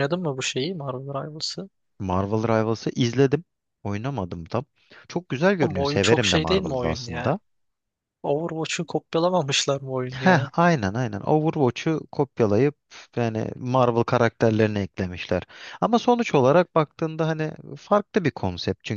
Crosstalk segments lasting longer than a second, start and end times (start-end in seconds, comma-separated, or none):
5.6-7.4